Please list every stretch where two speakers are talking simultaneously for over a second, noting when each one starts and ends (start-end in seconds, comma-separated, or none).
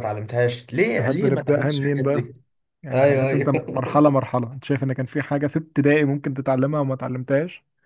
1.0-2.2, 2.9-4.1